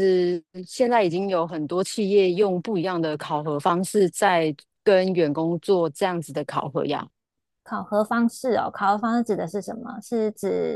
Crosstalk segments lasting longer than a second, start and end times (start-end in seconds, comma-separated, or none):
none